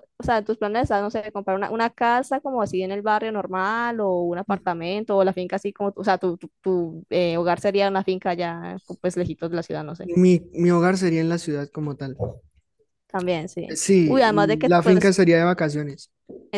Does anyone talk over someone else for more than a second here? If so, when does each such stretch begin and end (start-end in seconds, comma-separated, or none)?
13.7-15.1